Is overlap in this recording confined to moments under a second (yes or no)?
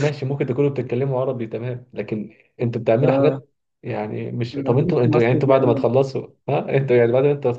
no